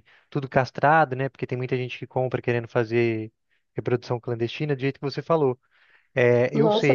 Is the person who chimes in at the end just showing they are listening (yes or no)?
no